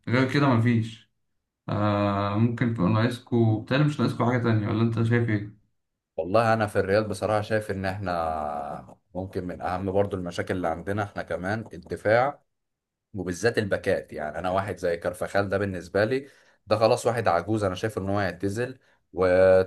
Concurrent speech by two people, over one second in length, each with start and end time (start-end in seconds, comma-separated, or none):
none